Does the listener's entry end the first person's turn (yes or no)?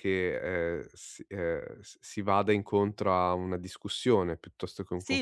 yes